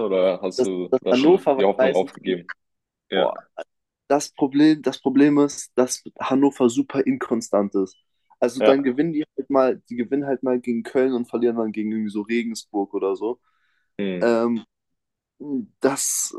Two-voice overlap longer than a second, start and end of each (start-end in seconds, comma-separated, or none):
0.6-2.4